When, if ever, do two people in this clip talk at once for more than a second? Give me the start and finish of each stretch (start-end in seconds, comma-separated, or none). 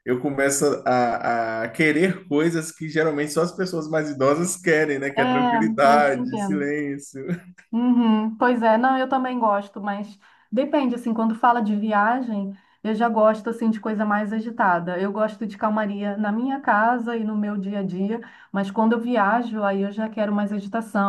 5.2-6.7